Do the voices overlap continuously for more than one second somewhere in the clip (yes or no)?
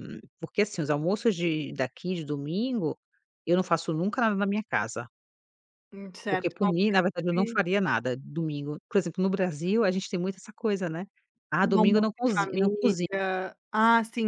yes